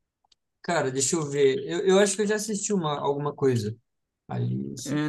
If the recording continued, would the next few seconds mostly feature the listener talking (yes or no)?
yes